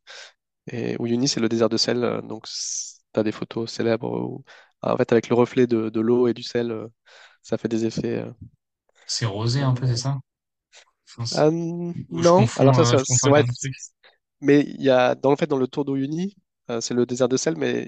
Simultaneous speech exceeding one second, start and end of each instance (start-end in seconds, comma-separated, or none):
12.1-13.4